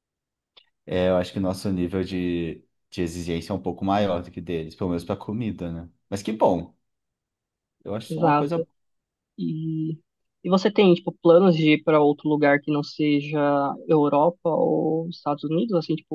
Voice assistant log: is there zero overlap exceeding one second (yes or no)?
yes